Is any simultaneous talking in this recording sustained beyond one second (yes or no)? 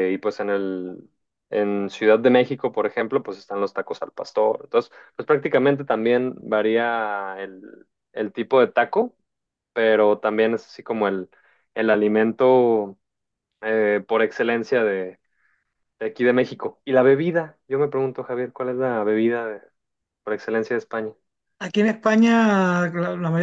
no